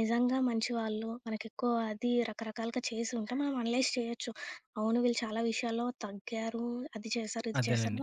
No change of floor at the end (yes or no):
yes